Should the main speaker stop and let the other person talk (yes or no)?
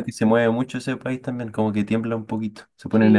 yes